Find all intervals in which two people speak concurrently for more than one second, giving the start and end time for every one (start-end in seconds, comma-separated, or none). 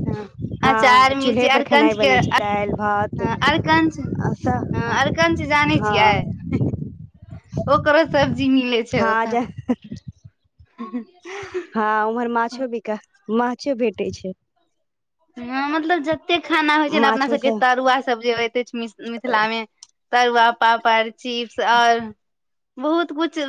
0.7-3.1